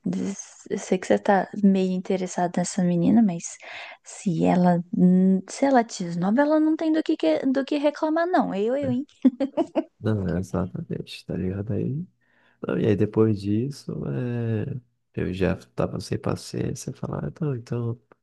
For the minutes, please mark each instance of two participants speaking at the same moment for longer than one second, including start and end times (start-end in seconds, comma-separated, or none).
none